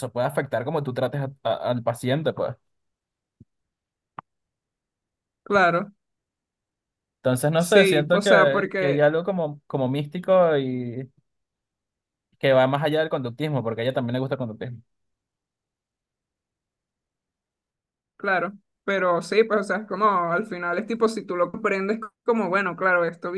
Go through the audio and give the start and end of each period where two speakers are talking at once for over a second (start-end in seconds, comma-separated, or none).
7.6-9.1